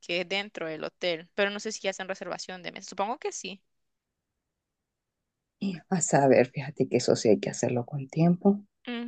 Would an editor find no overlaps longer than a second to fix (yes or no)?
yes